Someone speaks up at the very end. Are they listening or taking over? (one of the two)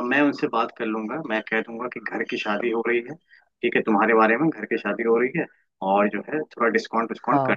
listening